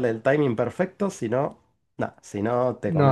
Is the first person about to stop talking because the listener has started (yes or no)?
yes